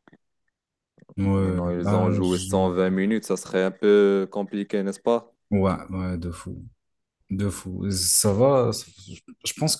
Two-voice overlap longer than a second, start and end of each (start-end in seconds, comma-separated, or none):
1.4-2.8